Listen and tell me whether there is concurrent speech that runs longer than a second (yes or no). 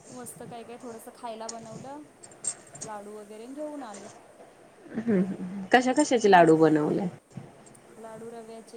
no